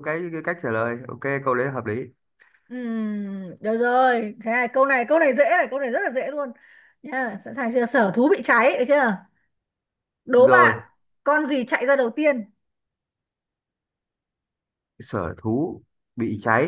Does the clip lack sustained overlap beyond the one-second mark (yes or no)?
yes